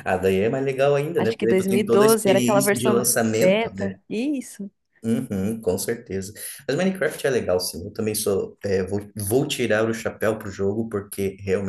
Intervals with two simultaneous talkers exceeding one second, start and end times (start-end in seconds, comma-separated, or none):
1.2-4.0